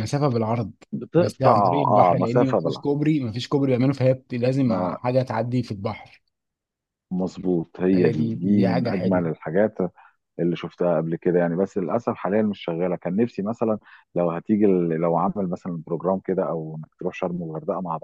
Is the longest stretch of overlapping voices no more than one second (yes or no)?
no